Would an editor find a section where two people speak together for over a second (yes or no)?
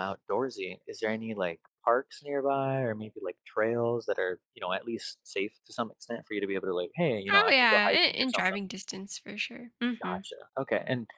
yes